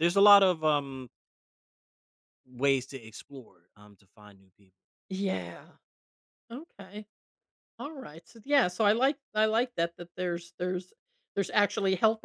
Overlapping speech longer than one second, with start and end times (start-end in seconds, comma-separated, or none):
none